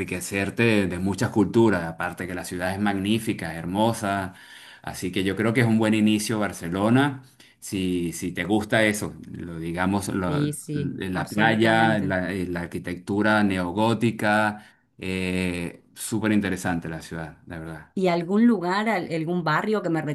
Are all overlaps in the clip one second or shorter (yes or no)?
no